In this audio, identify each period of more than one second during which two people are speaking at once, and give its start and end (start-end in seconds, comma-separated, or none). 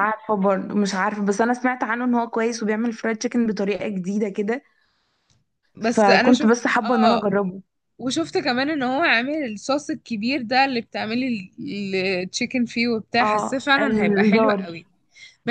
5.9-7.2, 13.2-14.8